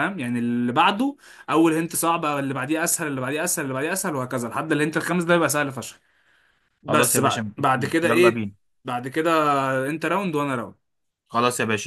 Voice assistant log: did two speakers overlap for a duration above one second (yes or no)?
yes